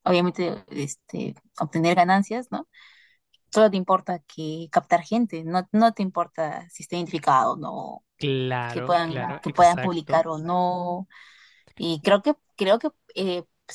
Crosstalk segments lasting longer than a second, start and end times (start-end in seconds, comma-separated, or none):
8.7-10.2